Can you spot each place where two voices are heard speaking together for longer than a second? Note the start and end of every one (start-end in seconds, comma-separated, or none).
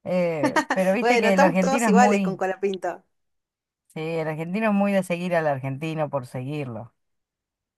1.0-2.4